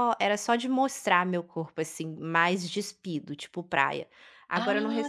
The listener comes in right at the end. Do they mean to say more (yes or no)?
no